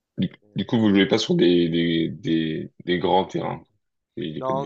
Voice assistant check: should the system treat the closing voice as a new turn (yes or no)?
yes